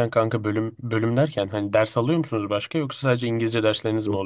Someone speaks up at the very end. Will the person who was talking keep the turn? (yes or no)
no